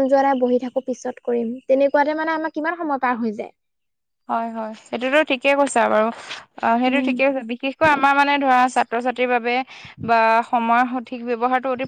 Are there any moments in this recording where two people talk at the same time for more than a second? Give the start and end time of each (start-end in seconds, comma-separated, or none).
none